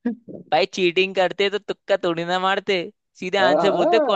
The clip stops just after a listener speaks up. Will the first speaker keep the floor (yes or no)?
no